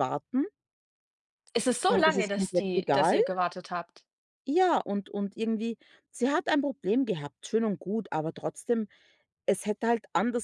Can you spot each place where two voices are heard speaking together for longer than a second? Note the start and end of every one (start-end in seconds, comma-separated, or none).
1.9-3.2